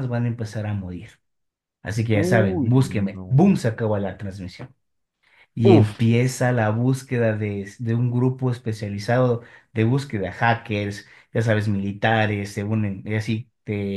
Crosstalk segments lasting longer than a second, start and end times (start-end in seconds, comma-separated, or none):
2.1-3.6